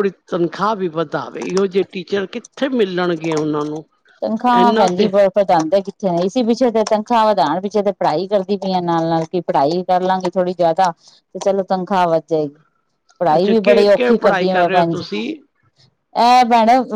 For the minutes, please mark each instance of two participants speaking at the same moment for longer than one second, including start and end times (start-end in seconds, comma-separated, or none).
13.3-15.1